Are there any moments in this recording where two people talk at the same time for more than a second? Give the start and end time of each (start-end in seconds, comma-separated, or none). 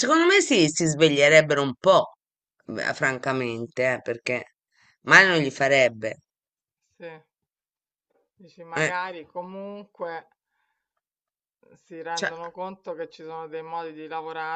none